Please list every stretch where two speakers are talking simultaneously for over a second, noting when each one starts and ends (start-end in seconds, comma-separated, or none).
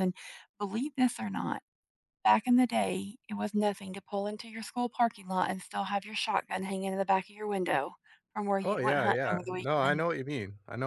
8.6-10.0